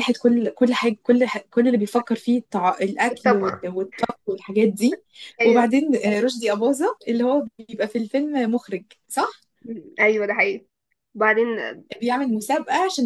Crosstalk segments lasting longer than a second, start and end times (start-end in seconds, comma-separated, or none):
none